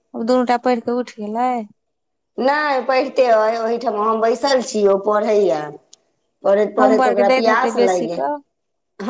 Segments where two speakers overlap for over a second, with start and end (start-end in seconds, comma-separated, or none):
6.8-8.2